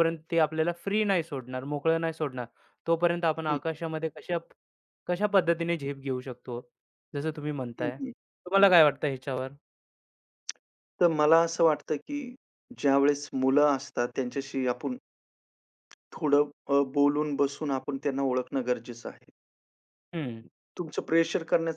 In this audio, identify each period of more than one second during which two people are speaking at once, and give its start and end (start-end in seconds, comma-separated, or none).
none